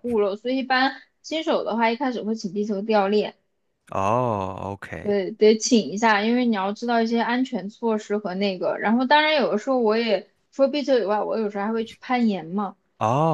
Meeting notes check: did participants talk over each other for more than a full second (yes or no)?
no